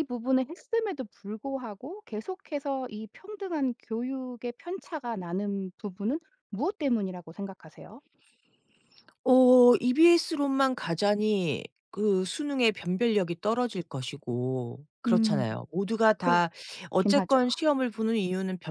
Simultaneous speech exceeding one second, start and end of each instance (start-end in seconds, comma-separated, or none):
none